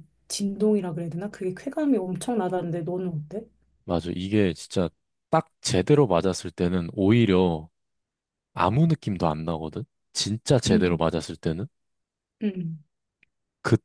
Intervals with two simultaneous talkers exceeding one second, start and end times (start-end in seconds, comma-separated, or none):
none